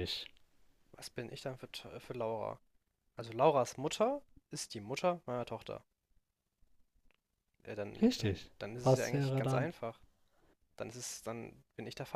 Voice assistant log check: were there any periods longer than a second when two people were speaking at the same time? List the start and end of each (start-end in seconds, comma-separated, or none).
8.0-9.7